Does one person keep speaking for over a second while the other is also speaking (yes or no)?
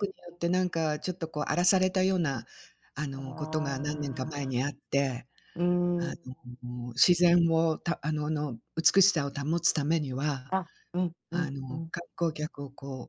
yes